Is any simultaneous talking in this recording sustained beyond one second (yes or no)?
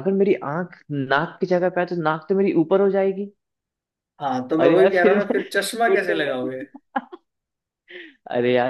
yes